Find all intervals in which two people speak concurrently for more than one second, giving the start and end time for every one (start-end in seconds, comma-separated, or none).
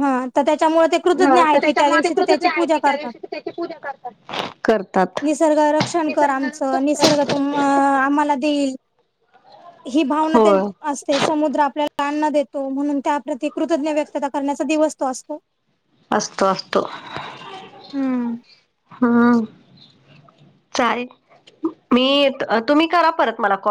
1.2-3.1, 6.0-7.4